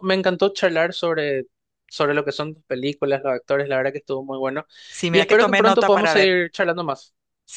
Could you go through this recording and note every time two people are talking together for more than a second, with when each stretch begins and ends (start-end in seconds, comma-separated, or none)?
5.1-6.4